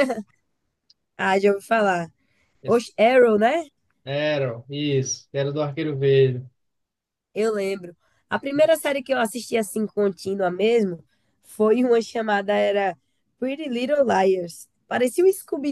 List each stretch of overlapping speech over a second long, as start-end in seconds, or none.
none